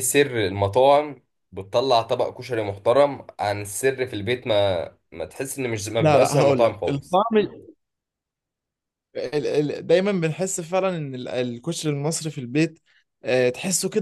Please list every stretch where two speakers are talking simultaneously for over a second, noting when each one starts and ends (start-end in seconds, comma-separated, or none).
6.0-7.2